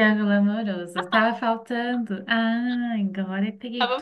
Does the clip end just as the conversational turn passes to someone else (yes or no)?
yes